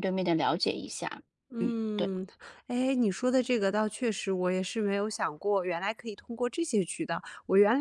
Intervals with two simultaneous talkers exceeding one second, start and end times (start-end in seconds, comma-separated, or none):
none